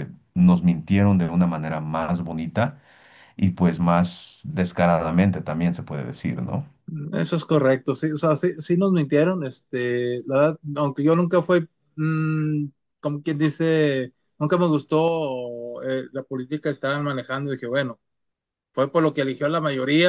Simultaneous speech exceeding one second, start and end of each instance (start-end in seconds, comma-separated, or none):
none